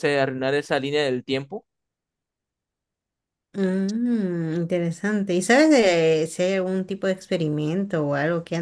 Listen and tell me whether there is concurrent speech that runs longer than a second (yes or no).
no